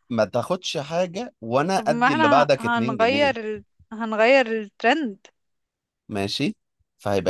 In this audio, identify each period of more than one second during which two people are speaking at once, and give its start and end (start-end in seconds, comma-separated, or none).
1.8-3.3